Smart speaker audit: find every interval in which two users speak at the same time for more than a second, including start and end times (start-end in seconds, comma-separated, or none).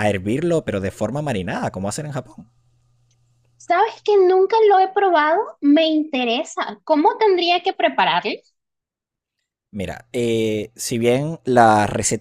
none